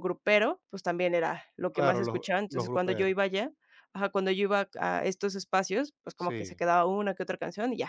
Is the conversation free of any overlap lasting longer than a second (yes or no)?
no